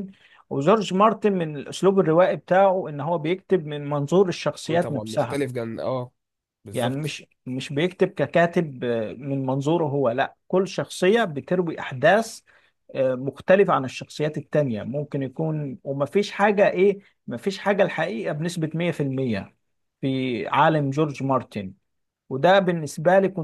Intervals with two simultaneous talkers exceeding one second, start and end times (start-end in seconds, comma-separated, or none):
none